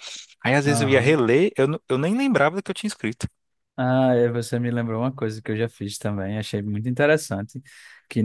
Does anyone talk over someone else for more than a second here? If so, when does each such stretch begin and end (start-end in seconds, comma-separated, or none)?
none